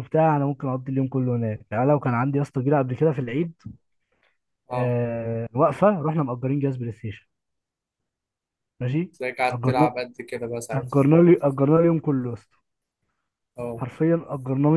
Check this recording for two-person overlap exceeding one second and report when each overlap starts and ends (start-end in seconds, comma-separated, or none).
none